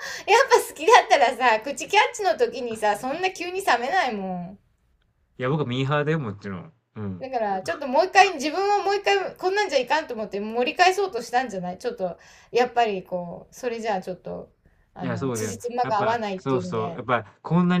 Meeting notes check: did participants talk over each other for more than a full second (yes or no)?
yes